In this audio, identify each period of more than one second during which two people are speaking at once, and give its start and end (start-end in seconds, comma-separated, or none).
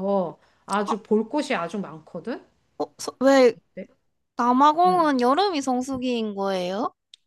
none